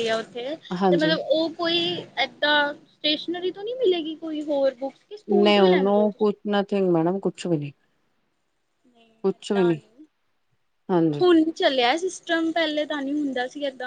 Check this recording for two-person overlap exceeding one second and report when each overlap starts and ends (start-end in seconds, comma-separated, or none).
none